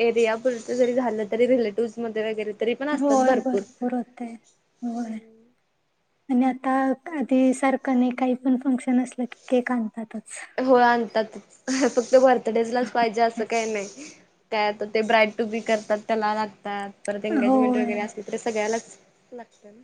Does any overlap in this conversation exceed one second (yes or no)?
no